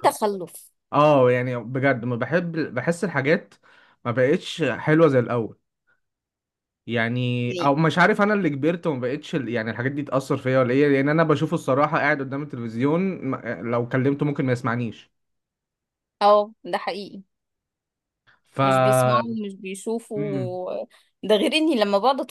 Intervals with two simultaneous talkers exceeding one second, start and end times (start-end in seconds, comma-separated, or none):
none